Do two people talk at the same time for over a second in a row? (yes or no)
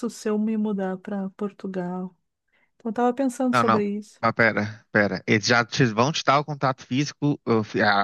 no